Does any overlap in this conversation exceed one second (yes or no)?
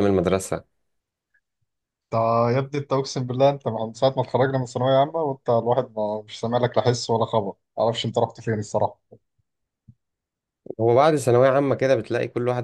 no